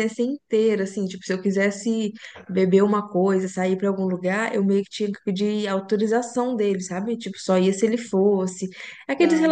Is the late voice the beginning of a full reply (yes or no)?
no